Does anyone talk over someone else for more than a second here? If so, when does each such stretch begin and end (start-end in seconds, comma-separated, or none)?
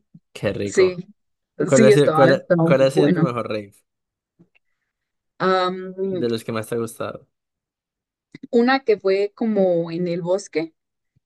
1.7-3.2